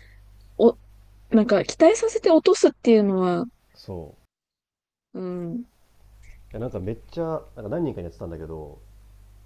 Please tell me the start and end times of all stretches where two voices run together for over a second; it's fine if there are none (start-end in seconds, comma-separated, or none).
none